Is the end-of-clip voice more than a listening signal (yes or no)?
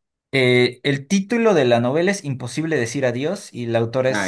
yes